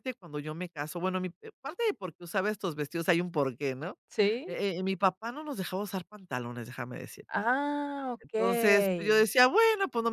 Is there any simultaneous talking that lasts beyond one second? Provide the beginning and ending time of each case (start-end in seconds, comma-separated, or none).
none